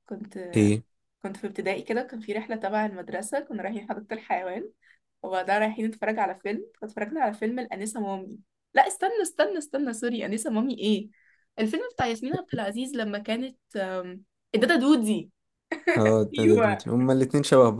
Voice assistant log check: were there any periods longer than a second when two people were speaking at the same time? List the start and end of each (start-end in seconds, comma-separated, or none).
none